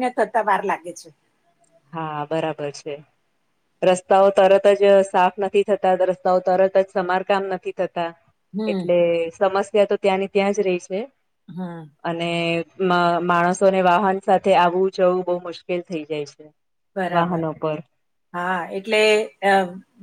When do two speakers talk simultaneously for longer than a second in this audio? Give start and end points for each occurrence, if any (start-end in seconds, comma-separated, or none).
none